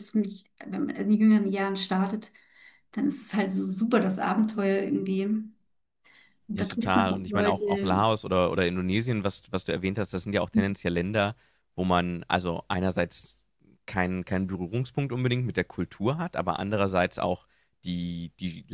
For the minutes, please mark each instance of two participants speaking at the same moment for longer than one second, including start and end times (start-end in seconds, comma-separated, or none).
6.5-8.1